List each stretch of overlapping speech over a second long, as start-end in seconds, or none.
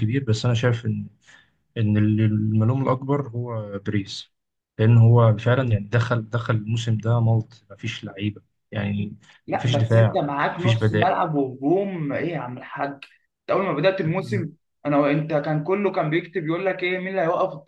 9.5-11.2